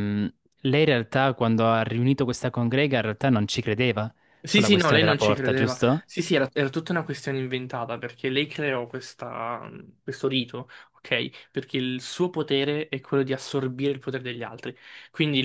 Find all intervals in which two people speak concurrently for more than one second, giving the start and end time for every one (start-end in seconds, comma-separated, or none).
4.4-6.0